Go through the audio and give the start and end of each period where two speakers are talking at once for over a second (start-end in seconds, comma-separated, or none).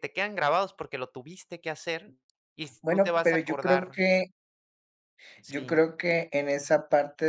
2.8-4.0